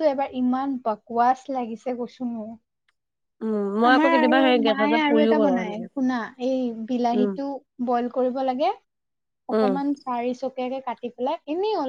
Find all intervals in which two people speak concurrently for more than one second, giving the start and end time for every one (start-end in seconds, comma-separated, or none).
3.9-5.9